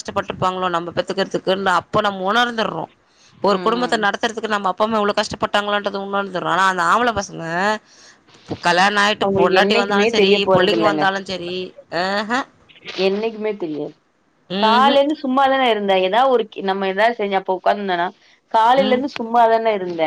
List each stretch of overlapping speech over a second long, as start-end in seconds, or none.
9.2-11.0